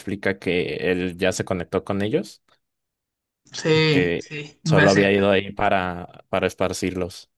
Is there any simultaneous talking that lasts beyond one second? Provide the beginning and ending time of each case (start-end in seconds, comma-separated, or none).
3.7-5.1